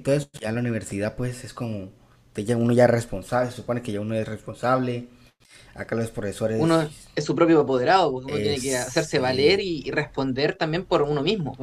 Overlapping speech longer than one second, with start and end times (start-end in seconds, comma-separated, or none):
8.2-9.6